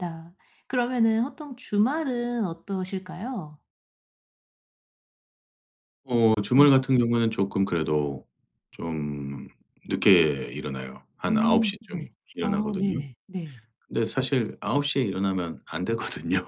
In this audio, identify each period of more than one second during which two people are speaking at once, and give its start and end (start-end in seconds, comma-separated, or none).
11.3-13.0